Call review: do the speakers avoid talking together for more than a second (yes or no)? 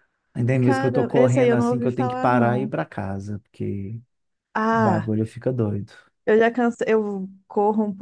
no